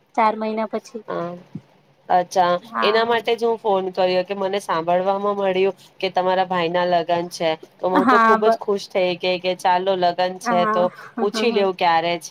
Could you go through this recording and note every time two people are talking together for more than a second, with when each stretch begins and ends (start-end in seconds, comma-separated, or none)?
none